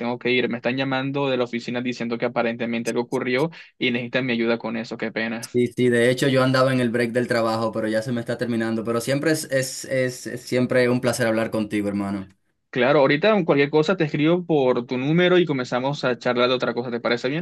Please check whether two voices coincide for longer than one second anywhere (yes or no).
no